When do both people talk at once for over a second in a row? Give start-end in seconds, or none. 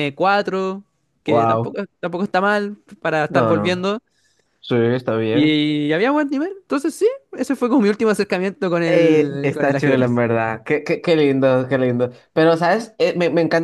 8.9-10.2